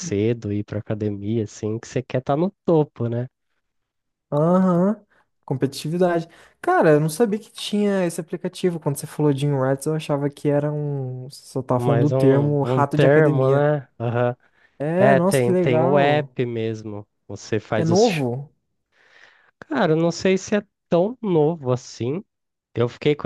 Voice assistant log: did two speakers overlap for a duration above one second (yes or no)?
yes